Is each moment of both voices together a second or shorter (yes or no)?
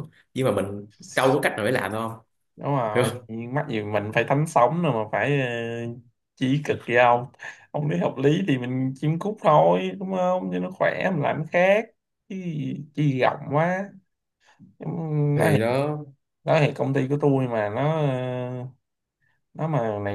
yes